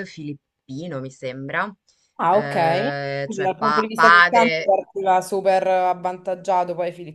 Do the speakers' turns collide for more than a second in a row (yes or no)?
yes